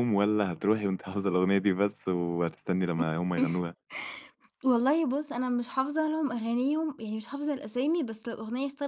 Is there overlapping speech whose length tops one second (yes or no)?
no